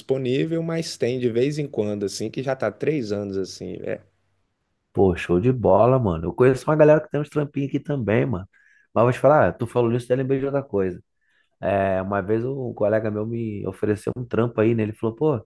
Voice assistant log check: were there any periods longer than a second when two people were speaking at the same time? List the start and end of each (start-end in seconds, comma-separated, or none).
none